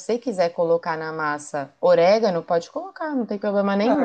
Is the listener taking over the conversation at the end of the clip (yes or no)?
yes